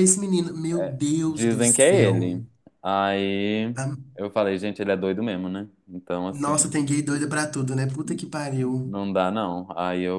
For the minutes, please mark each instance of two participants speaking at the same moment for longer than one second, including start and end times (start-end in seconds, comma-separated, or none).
0.8-2.3